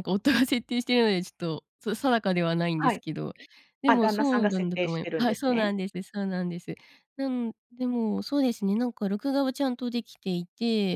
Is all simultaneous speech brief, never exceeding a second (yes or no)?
no